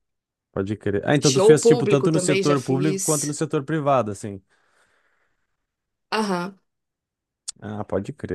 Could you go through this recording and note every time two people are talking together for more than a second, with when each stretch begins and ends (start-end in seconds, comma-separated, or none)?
1.2-3.4